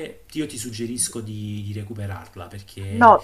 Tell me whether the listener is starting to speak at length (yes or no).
yes